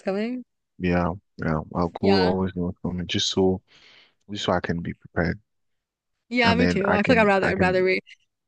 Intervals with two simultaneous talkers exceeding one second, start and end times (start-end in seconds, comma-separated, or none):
6.4-7.8